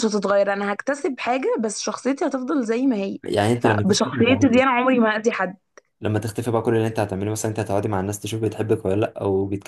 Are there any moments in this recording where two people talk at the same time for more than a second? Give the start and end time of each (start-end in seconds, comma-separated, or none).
3.6-4.8